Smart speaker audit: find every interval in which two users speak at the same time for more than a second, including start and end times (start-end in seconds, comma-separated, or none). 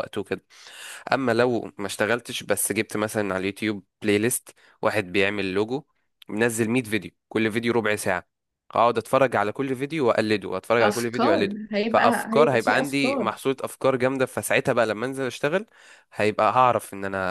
10.8-13.3